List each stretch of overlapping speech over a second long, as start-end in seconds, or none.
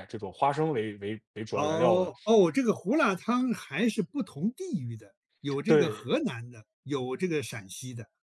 none